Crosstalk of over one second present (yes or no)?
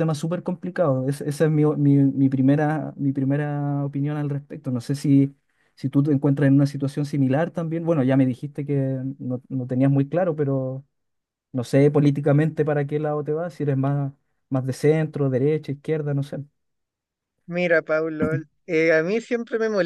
no